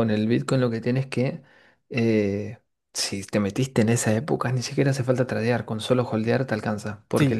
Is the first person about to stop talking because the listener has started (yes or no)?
no